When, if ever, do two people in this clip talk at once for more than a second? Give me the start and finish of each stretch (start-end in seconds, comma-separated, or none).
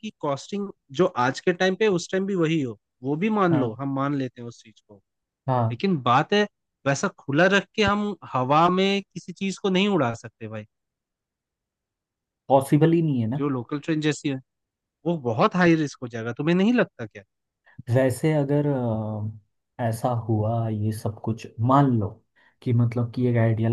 none